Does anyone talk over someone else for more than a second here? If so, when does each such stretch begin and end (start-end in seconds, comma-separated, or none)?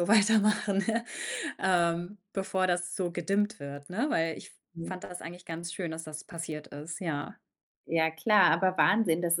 none